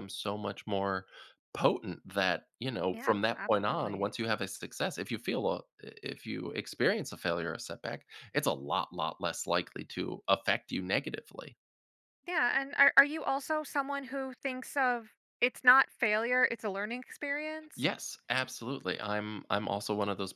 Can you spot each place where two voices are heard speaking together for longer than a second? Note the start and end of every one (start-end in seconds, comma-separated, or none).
2.9-4.1